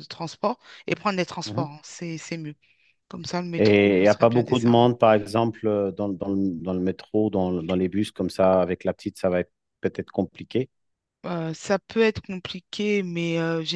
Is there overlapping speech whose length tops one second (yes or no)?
yes